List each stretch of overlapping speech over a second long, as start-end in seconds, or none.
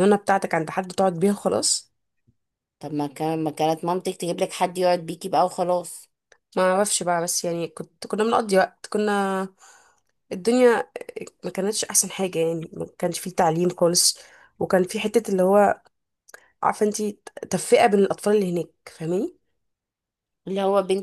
none